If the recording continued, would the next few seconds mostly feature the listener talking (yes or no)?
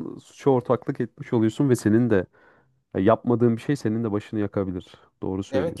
yes